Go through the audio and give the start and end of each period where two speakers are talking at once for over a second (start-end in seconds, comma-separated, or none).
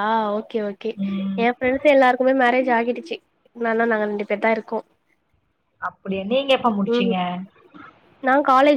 none